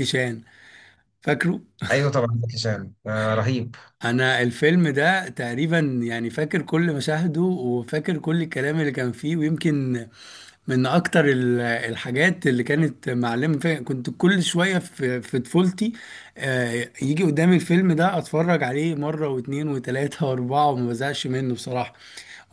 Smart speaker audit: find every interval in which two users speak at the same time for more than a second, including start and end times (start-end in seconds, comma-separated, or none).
none